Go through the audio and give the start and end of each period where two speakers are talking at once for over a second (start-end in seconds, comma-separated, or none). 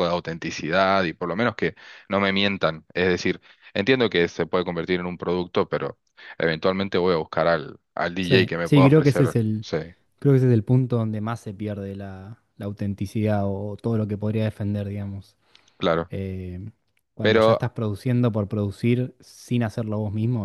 8.2-9.7